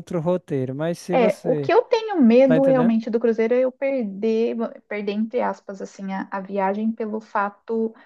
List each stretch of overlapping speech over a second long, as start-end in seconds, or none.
none